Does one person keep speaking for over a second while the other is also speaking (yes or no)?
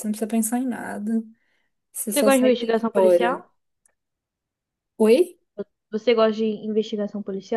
yes